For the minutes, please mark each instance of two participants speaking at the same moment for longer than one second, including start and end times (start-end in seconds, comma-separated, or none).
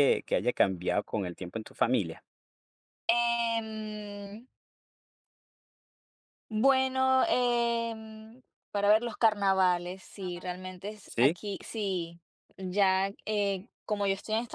none